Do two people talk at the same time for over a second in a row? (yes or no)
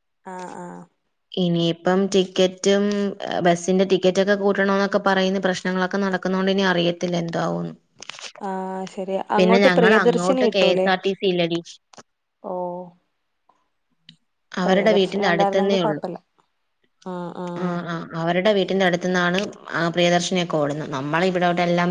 yes